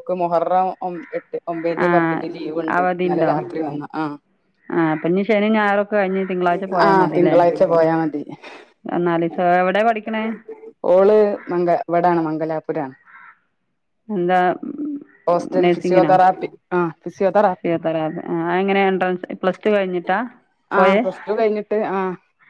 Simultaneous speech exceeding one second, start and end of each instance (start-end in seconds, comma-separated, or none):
none